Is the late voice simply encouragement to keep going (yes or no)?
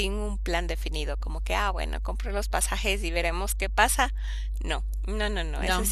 yes